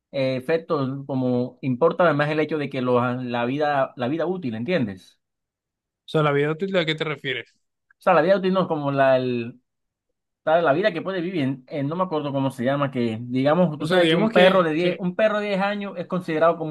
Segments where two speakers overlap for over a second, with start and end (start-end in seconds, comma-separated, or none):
13.8-15.0